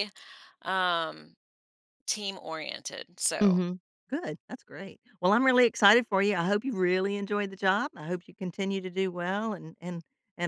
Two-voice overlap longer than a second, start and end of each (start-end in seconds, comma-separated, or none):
none